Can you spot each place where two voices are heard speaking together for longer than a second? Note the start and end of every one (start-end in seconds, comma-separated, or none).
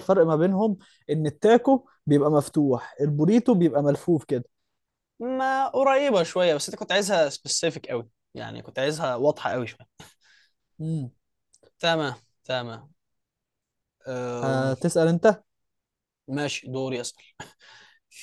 none